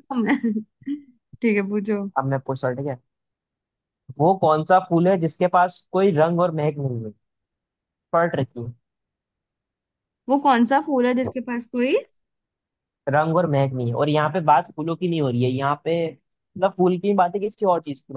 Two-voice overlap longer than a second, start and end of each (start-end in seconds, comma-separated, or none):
none